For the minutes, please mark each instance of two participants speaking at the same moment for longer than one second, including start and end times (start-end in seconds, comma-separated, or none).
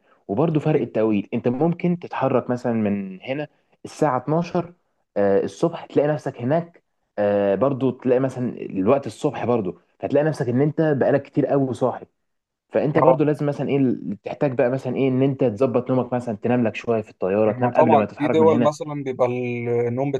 17.5-18.7